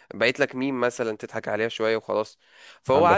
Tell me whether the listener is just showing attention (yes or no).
yes